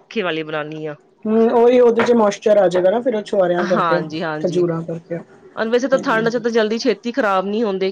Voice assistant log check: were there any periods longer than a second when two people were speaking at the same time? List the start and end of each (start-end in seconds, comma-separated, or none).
none